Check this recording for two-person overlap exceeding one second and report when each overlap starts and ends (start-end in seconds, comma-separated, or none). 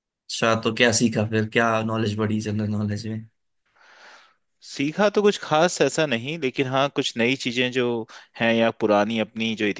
none